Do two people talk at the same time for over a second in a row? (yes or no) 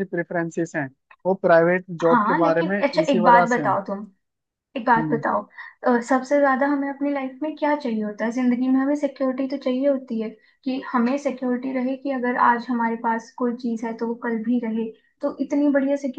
yes